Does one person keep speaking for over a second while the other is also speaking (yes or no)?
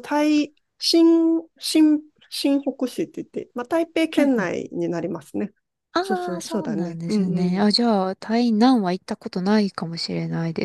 yes